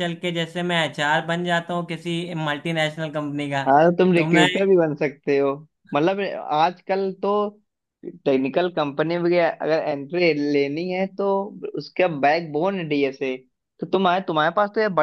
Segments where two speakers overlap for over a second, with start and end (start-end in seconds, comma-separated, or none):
none